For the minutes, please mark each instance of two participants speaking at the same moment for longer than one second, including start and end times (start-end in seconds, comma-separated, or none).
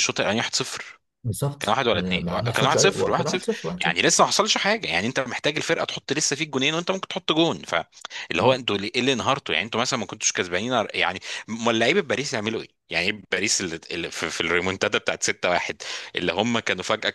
1.6-4.0